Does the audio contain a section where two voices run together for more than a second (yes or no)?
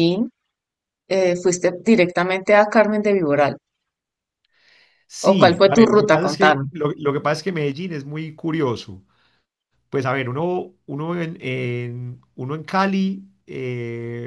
yes